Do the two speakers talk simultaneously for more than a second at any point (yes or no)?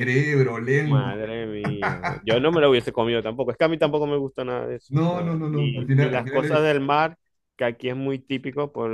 yes